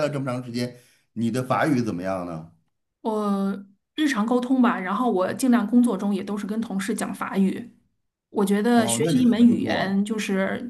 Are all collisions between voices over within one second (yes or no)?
no